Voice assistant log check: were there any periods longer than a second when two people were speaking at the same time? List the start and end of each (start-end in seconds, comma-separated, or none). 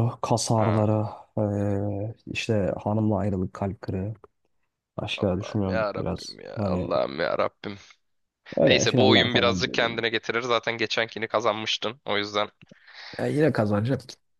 5.2-6.9, 8.6-10.0